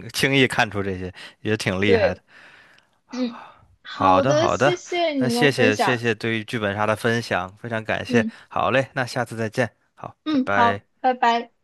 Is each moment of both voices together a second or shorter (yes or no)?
no